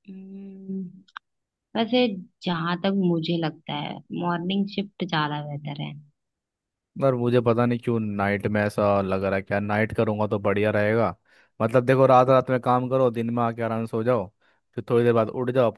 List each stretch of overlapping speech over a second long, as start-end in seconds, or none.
none